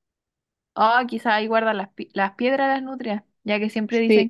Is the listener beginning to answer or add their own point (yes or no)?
no